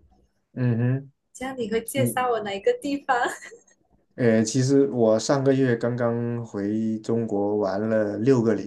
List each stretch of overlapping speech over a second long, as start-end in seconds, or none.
none